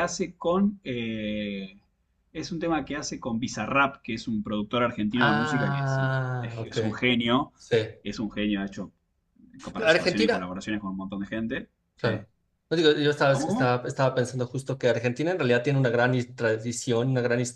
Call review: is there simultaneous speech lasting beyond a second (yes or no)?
yes